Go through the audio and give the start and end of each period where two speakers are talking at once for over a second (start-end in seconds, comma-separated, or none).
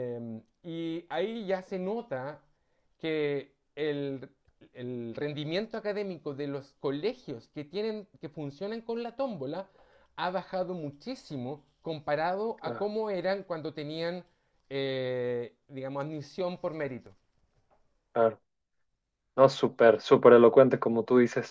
none